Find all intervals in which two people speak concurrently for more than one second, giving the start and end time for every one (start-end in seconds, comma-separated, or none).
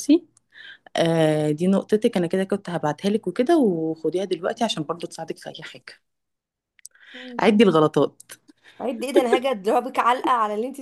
none